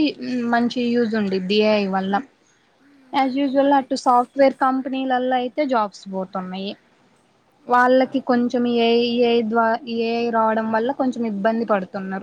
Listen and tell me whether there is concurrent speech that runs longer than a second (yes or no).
yes